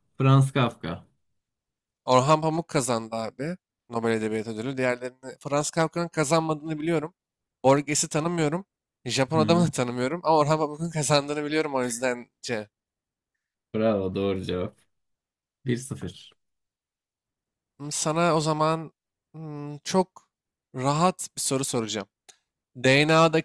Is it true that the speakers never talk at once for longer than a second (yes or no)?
yes